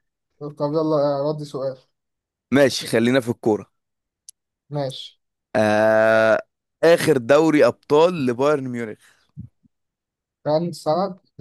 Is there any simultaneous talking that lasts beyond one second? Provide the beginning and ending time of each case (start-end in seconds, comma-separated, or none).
none